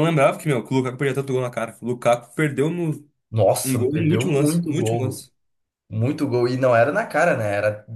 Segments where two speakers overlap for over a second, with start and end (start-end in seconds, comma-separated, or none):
3.6-5.3